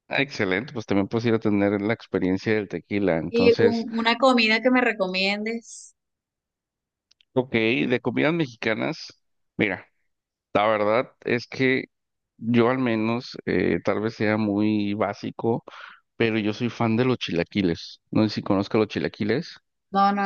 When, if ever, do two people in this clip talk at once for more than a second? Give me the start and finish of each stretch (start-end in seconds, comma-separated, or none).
none